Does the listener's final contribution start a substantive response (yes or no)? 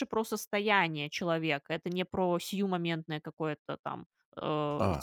yes